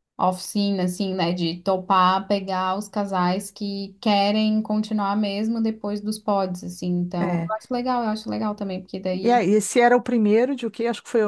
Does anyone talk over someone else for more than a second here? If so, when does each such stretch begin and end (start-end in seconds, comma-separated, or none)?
none